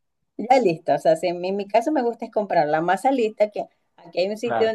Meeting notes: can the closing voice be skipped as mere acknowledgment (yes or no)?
yes